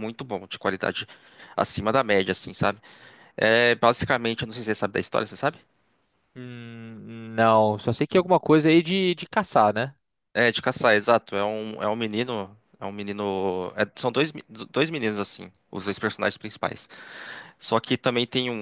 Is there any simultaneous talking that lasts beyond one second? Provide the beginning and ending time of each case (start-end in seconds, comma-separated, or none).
none